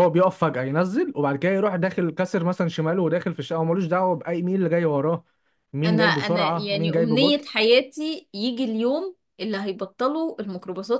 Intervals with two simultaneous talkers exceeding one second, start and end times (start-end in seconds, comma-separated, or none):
5.8-7.5